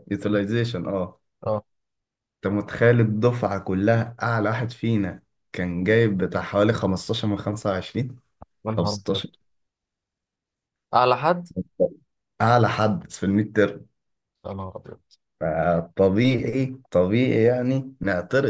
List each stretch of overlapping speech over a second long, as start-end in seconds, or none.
none